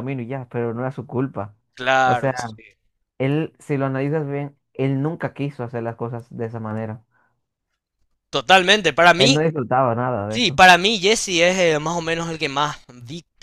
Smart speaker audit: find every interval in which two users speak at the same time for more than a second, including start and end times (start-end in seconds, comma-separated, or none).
none